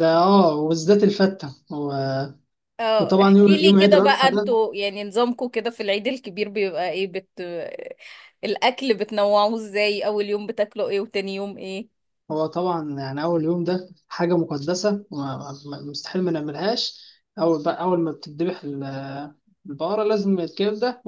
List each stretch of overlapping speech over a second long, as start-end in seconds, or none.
3.0-4.5